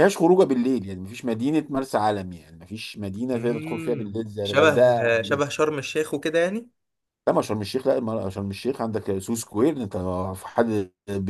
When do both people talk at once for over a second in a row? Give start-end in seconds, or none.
3.3-4.7